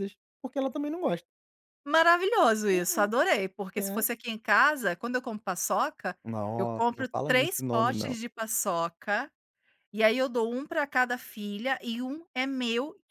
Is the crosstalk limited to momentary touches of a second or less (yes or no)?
no